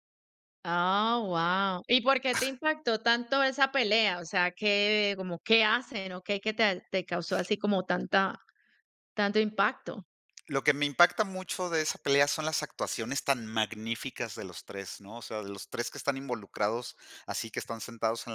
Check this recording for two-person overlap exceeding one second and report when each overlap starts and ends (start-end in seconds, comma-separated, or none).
none